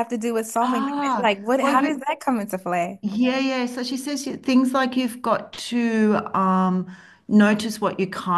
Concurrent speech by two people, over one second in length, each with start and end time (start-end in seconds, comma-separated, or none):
0.6-2.1